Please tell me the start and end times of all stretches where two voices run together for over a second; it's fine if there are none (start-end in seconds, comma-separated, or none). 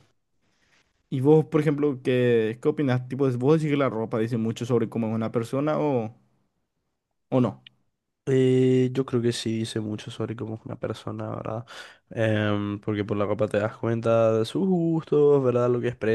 none